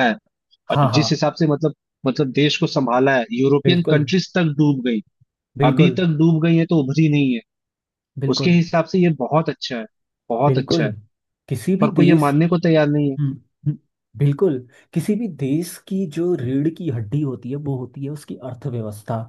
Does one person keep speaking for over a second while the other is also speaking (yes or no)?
no